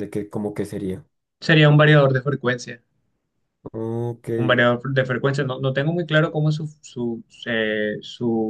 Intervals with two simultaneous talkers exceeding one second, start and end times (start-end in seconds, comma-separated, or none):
none